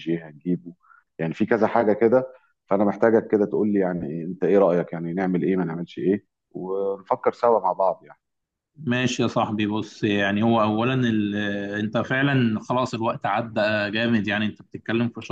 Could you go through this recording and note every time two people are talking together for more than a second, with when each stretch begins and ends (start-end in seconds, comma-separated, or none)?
none